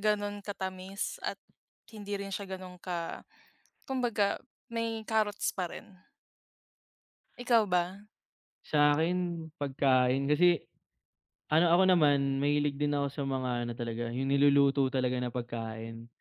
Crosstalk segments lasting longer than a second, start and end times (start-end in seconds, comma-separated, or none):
none